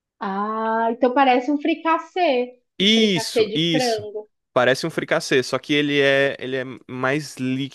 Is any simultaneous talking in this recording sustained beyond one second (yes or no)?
yes